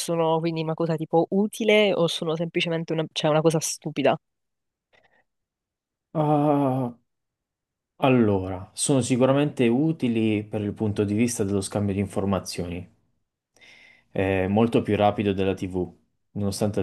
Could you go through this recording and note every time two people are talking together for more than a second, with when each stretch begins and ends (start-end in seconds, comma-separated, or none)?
none